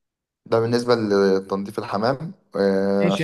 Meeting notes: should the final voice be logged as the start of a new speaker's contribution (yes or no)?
yes